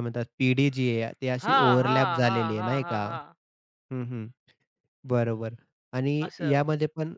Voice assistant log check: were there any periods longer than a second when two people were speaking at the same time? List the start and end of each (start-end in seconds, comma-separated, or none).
1.4-3.0